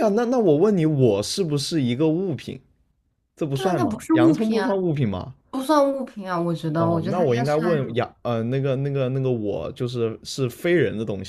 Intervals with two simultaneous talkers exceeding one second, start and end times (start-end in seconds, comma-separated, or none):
3.5-4.8, 6.8-8.0